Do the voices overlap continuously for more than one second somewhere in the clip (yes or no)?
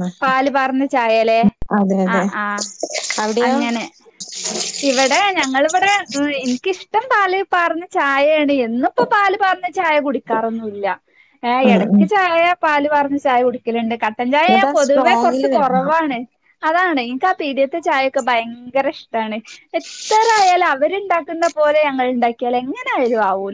yes